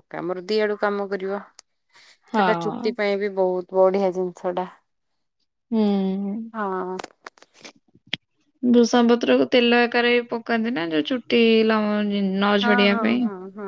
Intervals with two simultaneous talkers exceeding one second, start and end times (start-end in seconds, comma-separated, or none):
none